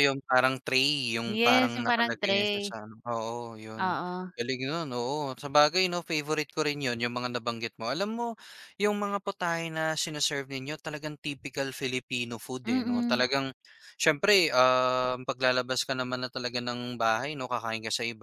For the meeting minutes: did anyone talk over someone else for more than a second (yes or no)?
yes